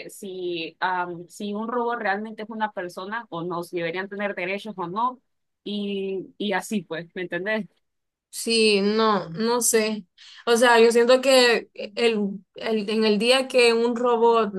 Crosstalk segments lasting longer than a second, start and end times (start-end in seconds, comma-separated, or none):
none